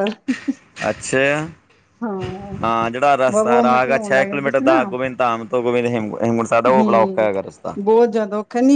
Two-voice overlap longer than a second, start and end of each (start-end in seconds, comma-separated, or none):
3.3-4.8